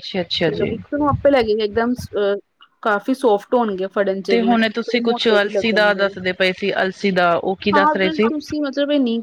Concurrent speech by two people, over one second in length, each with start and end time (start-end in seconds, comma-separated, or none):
4.3-6.1